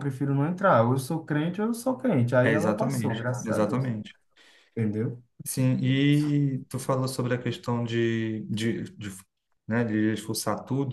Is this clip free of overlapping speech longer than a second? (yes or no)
no